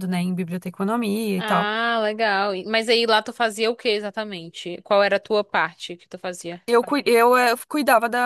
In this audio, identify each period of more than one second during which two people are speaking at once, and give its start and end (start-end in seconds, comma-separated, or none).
none